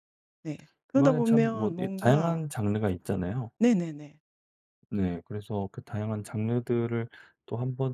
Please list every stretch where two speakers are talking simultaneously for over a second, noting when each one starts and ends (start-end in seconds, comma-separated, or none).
1.0-2.4